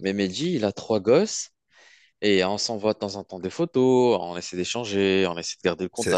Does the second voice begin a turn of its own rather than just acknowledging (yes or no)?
yes